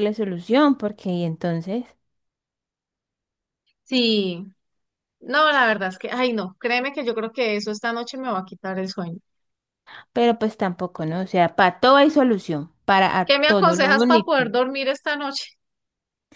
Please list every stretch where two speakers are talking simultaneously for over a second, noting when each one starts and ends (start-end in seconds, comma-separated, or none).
13.3-14.5